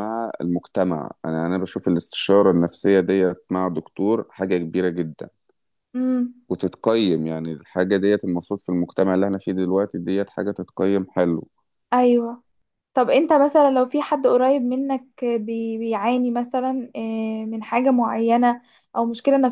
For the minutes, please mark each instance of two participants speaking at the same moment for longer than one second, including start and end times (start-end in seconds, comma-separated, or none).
none